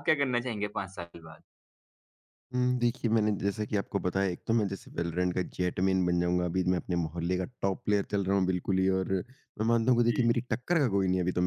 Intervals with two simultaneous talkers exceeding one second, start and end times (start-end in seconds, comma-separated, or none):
none